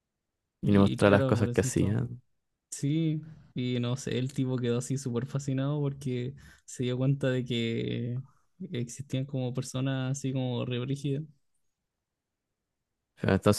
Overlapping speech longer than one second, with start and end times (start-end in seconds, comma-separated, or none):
0.6-2.0